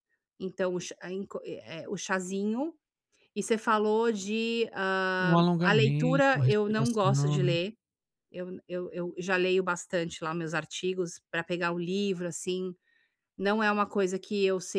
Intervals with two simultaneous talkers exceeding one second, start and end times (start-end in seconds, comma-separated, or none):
5.2-7.5